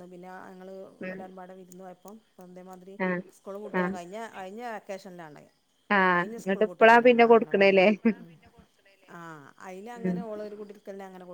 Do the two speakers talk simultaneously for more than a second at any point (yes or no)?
yes